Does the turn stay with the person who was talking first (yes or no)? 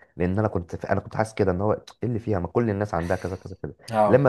yes